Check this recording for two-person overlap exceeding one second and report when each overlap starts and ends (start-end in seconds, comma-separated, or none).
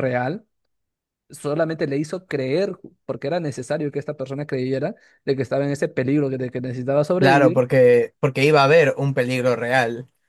none